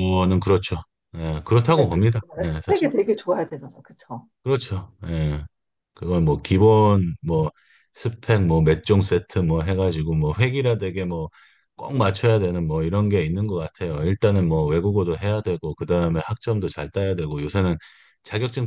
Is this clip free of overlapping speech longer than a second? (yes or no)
no